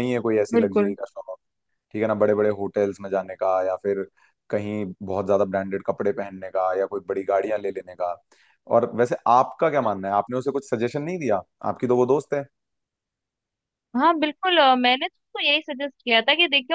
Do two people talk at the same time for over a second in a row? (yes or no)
no